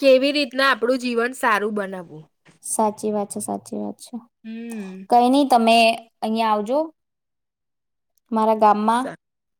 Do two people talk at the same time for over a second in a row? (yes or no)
no